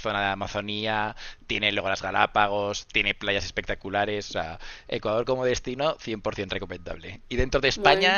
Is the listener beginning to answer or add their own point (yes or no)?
no